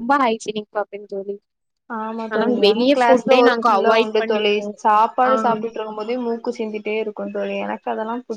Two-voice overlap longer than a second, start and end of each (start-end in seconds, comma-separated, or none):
2.3-4.6